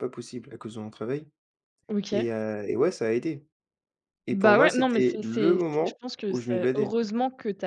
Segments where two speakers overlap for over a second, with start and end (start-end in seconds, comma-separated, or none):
4.3-6.9